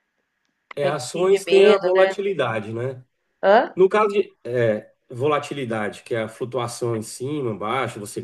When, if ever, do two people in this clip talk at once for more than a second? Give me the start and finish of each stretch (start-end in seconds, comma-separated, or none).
0.8-2.1